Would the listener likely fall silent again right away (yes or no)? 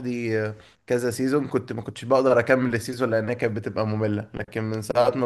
yes